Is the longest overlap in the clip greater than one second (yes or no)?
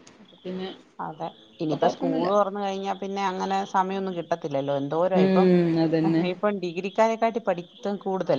no